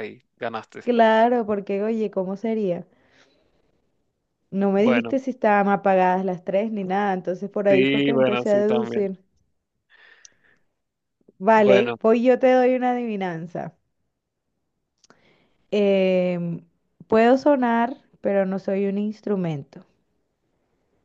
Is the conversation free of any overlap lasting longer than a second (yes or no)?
no